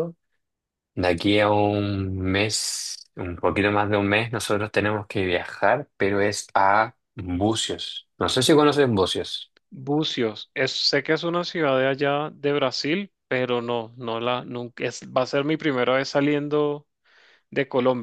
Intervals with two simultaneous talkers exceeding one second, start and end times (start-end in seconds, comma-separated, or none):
none